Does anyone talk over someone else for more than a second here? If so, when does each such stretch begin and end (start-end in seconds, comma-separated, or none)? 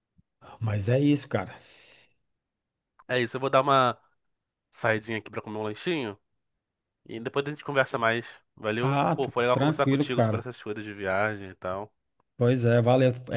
8.8-10.4